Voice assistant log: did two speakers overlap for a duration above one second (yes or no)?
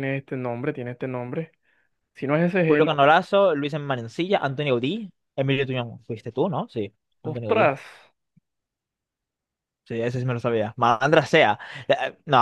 no